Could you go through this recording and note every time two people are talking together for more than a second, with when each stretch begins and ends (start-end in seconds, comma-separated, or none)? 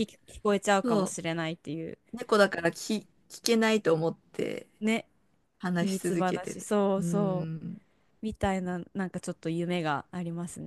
5.7-7.7